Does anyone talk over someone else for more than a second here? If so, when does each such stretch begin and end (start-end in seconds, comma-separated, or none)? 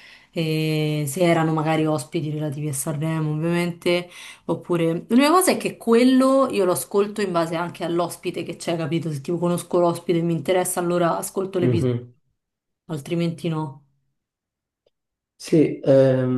none